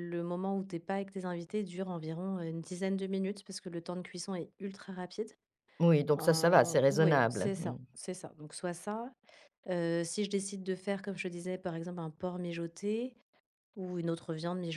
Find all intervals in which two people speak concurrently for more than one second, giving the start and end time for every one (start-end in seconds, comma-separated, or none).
6.1-7.8